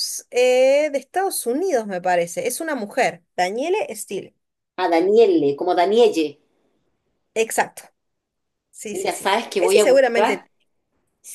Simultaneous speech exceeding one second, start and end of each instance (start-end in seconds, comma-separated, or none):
8.9-10.5